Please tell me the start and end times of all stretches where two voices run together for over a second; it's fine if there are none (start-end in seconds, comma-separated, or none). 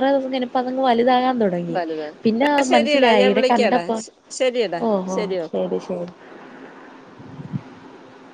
1.8-4.0